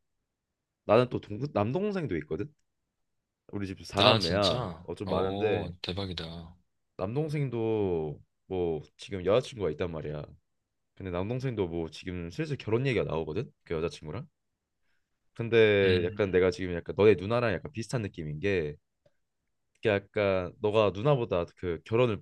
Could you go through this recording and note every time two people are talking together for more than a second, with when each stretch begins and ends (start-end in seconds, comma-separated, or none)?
4.0-5.7